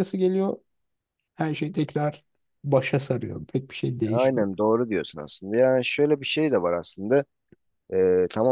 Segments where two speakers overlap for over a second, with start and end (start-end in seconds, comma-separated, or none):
none